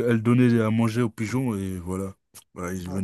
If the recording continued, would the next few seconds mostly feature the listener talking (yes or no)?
yes